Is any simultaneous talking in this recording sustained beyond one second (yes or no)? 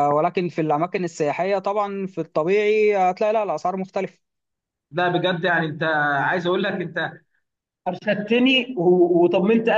no